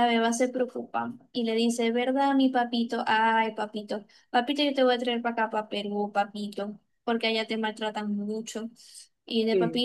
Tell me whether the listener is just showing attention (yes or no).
yes